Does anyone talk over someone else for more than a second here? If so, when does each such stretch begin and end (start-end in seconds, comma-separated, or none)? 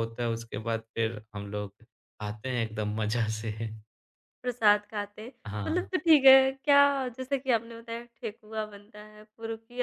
none